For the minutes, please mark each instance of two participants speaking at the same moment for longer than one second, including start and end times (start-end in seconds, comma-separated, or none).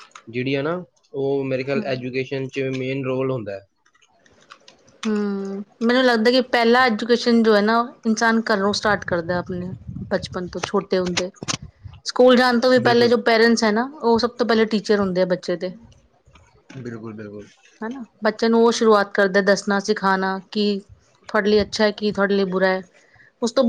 none